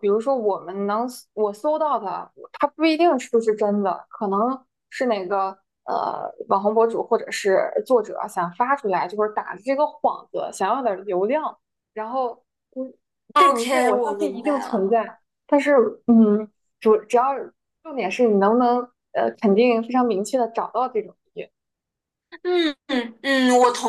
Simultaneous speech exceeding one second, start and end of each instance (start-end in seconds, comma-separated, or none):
13.4-14.9